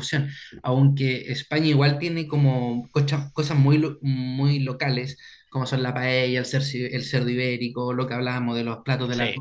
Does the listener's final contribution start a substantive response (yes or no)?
no